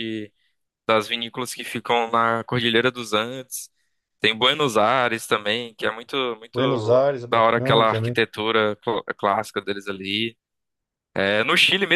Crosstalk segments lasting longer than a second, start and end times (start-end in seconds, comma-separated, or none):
6.5-8.2